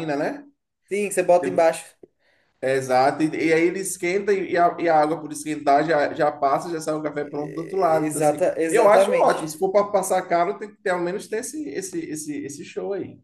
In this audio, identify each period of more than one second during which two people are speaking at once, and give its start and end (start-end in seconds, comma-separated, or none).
7.2-9.5